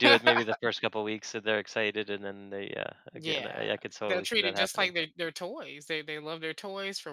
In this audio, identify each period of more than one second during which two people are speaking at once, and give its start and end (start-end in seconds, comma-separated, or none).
3.1-4.9